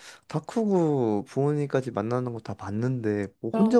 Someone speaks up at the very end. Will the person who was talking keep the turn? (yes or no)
yes